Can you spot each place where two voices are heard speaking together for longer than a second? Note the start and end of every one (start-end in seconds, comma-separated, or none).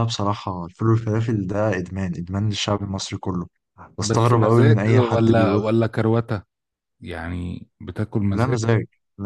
4.0-5.7